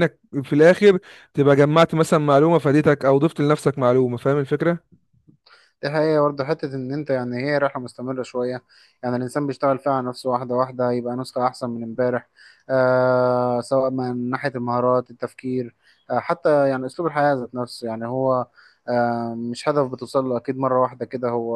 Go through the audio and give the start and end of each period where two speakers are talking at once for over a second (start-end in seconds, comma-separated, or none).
none